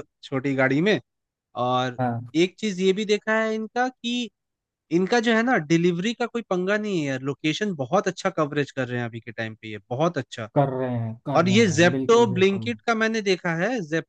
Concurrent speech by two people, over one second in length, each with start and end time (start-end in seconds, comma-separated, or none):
11.4-12.7